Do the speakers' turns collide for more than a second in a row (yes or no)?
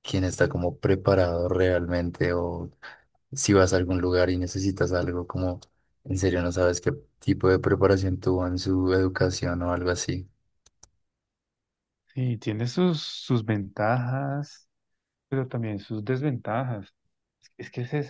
no